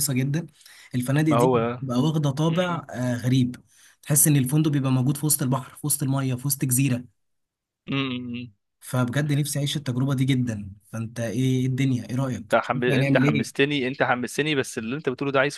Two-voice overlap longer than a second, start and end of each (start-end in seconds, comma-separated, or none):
12.4-13.6